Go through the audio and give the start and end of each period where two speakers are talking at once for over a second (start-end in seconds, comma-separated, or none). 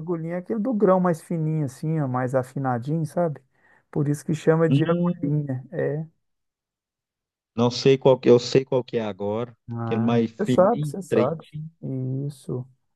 9.7-11.3